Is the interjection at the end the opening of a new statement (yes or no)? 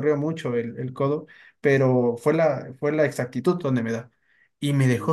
no